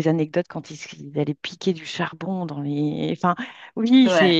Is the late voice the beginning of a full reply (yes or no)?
no